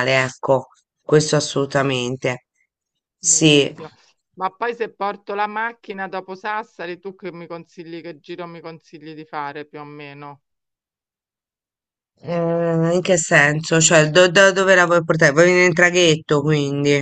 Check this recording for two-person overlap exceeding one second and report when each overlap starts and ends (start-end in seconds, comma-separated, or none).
none